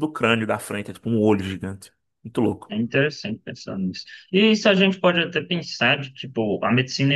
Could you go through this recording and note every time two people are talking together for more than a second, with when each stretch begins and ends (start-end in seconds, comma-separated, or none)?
none